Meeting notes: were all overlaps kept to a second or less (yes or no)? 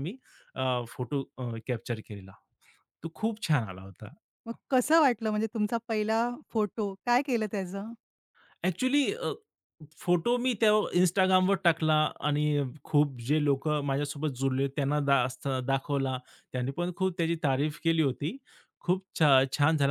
yes